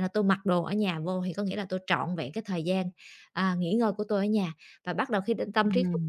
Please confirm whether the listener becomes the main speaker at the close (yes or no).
no